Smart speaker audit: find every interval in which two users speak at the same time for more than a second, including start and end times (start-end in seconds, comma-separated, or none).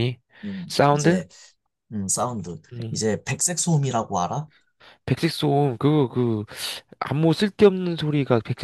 none